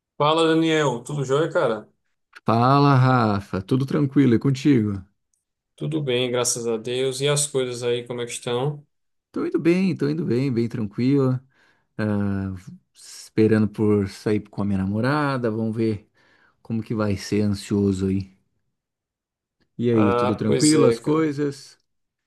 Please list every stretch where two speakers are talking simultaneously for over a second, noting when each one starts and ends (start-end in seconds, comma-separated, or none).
19.9-21.3